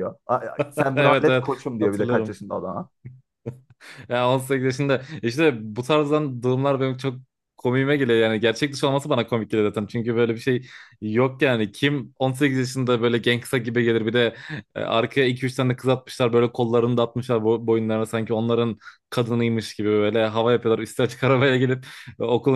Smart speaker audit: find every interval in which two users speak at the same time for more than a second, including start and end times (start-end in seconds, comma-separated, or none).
1.0-2.4